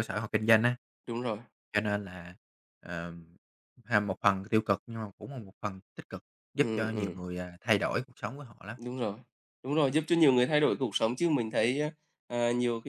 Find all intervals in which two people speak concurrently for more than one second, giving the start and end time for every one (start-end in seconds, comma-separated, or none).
none